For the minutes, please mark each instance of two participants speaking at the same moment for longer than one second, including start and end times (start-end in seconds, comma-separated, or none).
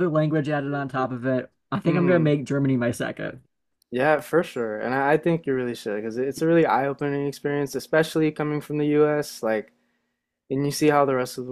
none